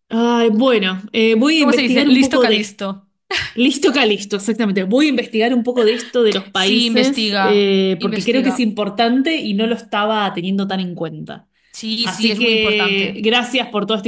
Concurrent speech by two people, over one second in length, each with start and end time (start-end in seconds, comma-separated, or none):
1.6-2.8, 6.6-8.7, 12.0-13.2